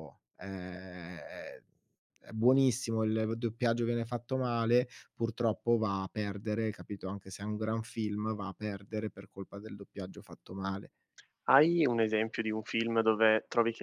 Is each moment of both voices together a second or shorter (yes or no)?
yes